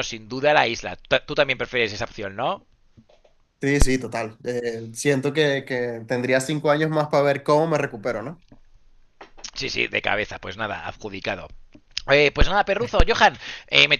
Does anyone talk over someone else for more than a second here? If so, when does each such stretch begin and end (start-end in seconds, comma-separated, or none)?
none